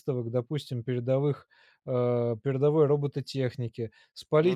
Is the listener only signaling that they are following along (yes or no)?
yes